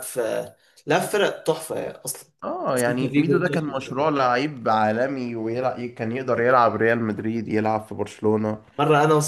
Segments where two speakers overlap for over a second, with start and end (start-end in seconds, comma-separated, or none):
2.7-4.1